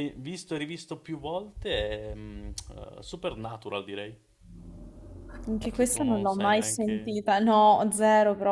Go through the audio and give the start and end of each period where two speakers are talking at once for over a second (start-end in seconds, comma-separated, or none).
5.7-7.2